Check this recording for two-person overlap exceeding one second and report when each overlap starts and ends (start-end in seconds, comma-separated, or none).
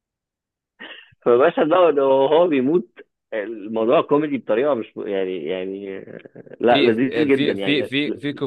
6.7-7.9